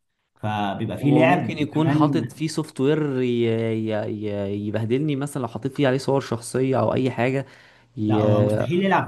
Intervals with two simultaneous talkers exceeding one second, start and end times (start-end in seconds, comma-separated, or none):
1.0-2.3